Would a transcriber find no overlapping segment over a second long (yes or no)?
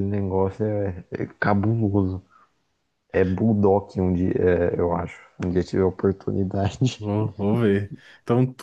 yes